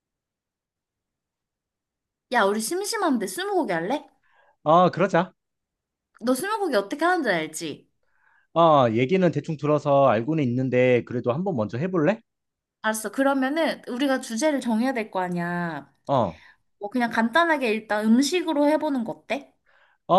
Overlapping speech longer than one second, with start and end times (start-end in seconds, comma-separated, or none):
none